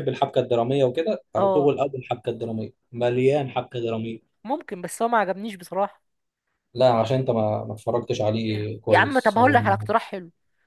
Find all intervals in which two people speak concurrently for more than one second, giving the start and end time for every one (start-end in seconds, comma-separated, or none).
8.3-9.9